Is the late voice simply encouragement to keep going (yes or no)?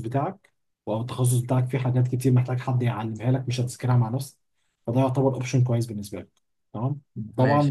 yes